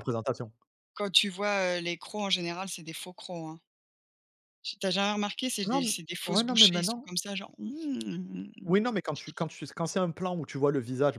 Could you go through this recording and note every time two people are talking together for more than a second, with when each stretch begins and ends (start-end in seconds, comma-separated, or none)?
5.6-7.1